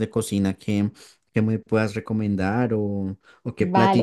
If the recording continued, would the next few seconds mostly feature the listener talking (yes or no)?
yes